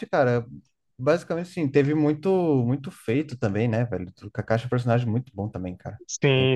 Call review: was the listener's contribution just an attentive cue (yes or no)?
no